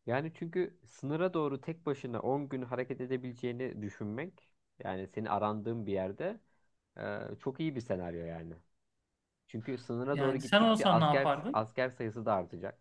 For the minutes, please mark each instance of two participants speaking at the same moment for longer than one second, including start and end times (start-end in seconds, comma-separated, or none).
10.1-11.7